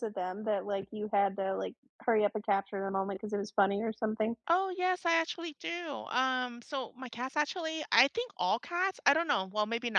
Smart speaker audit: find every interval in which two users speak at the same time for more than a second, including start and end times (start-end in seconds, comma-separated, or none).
none